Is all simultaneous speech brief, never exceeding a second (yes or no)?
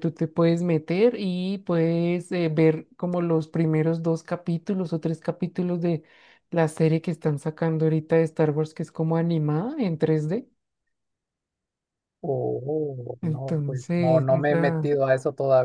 no